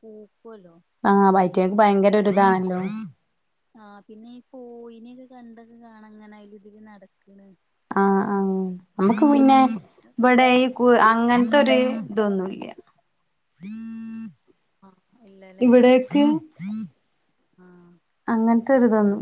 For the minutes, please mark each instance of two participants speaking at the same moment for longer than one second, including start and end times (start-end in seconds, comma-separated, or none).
none